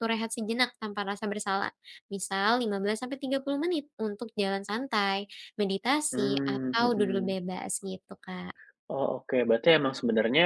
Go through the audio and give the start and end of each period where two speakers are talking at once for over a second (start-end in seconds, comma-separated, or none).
6.1-7.4